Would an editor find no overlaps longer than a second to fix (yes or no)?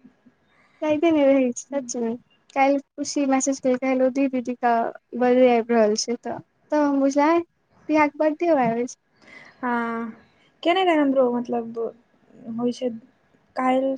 yes